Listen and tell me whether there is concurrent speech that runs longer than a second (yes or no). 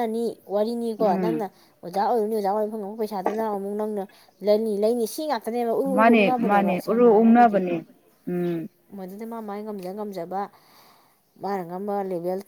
yes